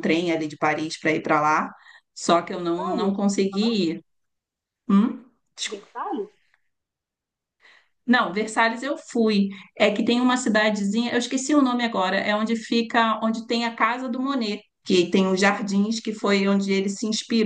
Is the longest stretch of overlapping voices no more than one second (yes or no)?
no